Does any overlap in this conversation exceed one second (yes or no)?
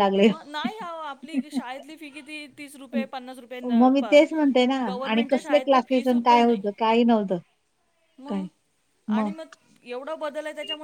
yes